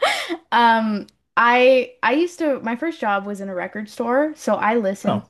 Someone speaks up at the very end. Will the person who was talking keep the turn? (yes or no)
yes